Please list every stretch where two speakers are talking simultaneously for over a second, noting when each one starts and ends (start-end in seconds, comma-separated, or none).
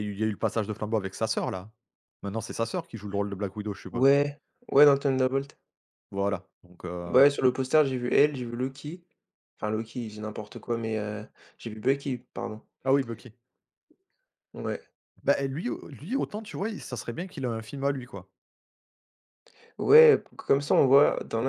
none